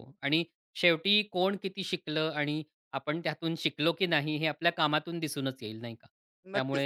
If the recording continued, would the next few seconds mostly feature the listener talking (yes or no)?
no